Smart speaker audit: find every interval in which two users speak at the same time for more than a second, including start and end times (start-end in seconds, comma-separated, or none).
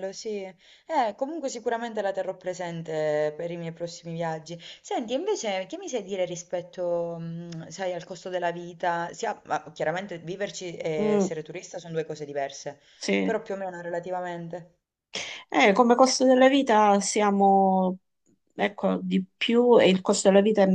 none